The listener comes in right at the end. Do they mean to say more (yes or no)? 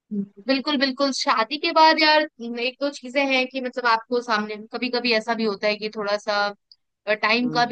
no